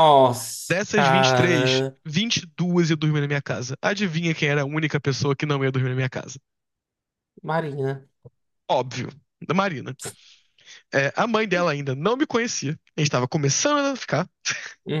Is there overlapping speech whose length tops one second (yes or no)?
yes